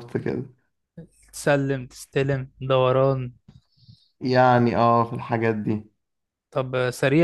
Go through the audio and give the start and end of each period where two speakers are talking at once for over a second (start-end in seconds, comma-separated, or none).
none